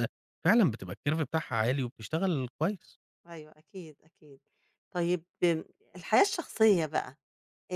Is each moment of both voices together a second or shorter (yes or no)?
yes